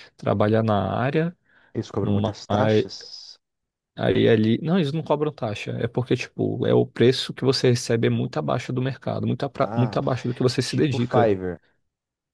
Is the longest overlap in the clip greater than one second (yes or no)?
yes